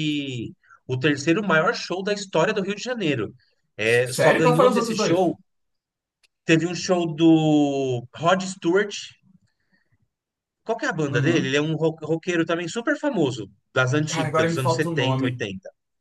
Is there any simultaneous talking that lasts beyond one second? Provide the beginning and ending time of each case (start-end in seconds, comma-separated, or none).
3.8-5.2, 14.1-15.5